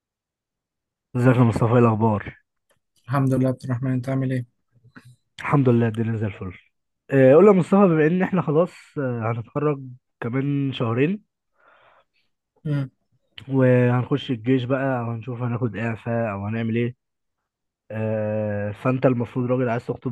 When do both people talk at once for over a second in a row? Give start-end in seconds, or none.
none